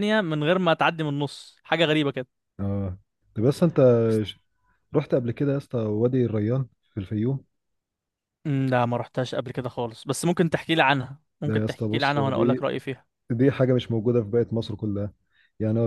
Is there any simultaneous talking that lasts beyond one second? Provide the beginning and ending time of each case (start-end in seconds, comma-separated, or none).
11.4-12.7